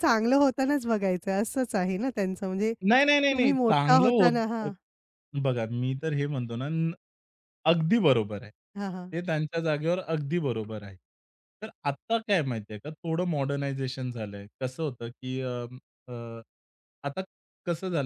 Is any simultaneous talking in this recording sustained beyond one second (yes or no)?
yes